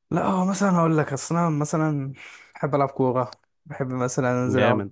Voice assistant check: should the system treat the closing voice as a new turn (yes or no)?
no